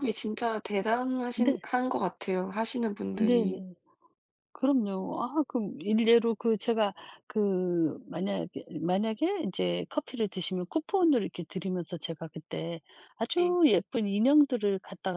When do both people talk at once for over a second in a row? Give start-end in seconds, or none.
none